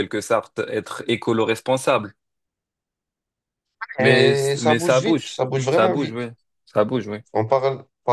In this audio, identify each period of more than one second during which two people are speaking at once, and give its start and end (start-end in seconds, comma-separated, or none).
4.0-6.2